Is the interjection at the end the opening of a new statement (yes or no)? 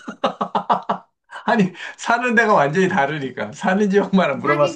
yes